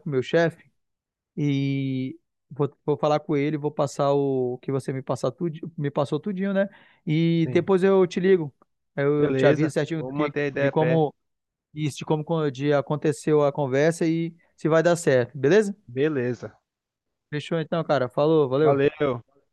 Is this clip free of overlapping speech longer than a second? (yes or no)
no